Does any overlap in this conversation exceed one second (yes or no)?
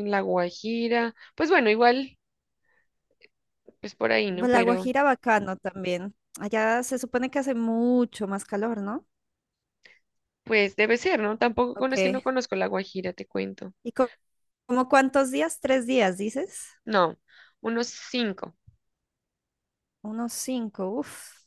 no